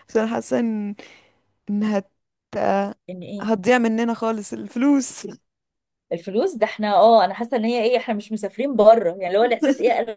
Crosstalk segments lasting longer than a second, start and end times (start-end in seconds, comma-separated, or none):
none